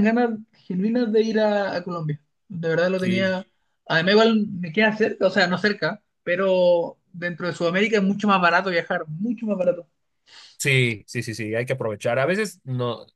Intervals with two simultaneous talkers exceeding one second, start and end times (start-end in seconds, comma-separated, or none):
none